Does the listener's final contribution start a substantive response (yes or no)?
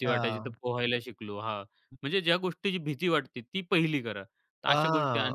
yes